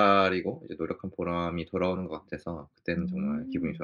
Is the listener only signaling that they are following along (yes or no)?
no